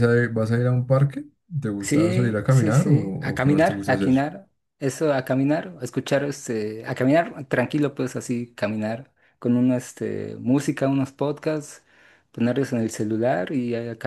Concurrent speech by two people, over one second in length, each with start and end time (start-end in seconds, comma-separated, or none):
1.8-4.3